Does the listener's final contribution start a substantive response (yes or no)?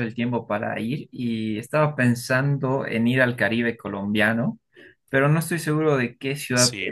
no